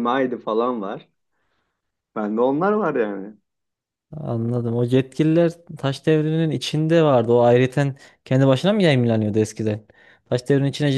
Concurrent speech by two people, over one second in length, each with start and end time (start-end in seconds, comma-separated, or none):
none